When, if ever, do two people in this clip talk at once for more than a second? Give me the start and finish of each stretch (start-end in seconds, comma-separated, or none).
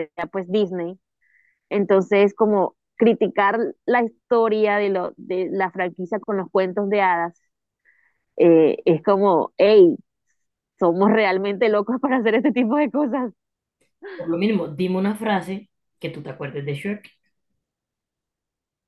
none